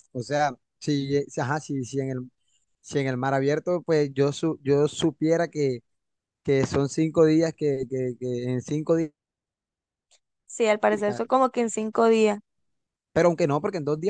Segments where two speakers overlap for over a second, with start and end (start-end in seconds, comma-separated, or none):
none